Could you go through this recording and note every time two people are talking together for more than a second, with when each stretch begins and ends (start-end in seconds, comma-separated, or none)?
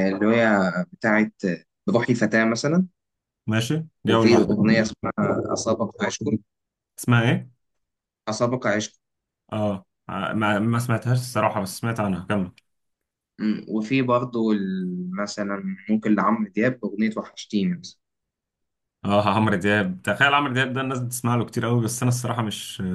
none